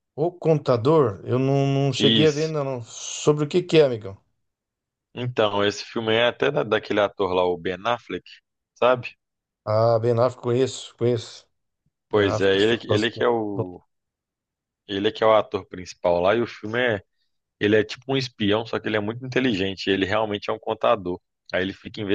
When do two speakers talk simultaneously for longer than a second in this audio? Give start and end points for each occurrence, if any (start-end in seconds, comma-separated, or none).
12.1-13.7